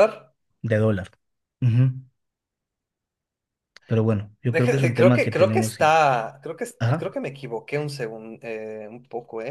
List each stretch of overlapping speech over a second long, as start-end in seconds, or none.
4.5-5.9